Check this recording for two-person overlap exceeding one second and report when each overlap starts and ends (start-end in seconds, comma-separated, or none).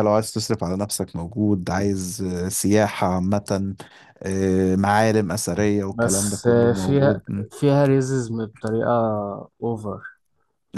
5.9-7.2